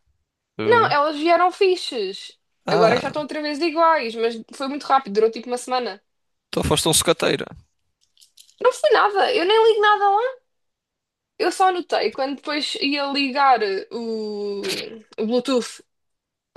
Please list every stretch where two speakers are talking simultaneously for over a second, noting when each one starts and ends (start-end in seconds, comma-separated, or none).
none